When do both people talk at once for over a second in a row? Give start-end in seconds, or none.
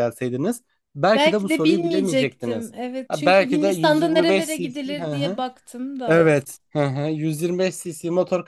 1.1-5.4